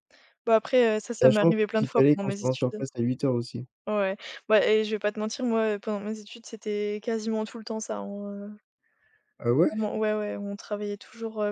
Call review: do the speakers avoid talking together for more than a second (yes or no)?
no